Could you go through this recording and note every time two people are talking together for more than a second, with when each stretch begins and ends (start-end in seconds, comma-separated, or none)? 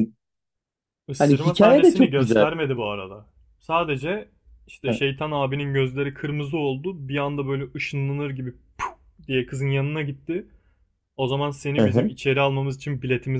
1.2-2.5